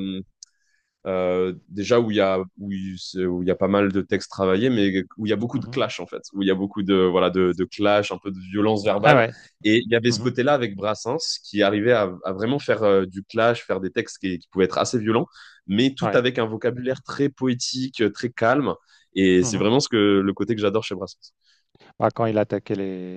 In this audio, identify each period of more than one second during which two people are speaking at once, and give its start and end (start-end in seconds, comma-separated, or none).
none